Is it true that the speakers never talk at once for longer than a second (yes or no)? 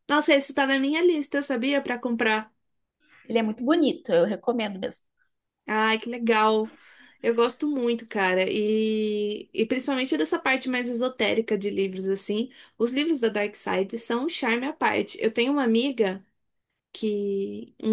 yes